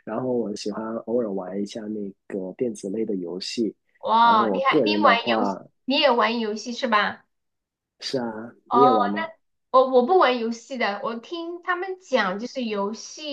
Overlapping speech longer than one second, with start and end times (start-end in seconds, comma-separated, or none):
4.2-5.6